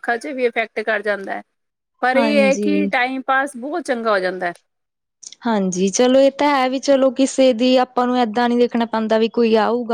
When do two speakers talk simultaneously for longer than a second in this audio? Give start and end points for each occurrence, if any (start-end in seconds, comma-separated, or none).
none